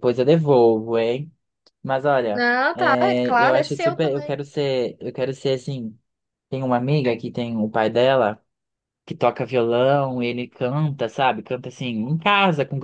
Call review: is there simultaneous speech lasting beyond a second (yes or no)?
yes